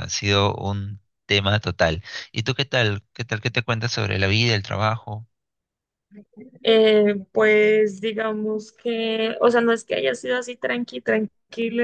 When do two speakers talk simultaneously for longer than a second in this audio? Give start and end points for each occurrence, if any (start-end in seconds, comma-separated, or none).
none